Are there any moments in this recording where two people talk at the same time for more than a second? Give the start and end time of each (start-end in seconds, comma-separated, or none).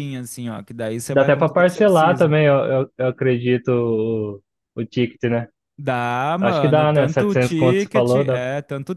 1.1-2.3, 6.4-8.4